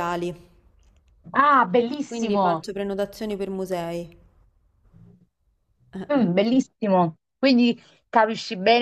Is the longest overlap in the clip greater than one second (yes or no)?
no